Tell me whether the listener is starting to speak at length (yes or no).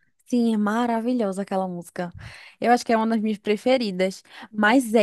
no